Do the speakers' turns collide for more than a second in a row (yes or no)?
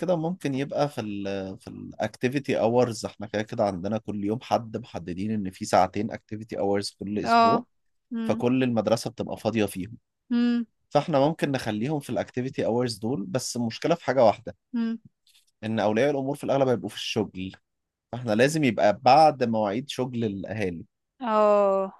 no